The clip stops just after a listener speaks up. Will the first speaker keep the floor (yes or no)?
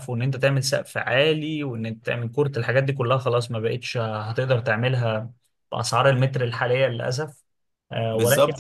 no